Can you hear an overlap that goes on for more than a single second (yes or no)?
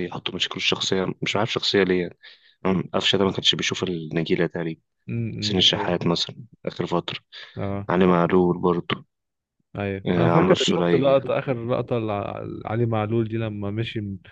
yes